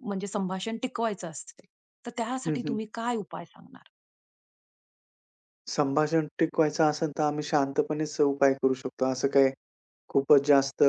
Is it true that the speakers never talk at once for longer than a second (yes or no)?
yes